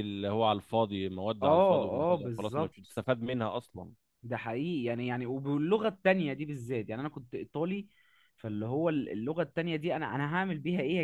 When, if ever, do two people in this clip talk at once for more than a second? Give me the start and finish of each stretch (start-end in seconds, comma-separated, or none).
1.4-2.8